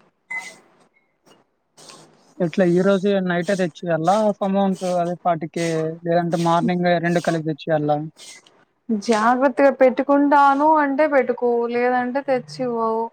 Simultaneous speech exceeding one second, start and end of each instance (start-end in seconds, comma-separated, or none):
none